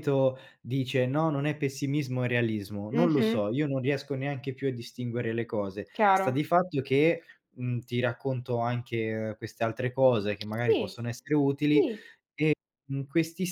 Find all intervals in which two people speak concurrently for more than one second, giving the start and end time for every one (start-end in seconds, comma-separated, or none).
none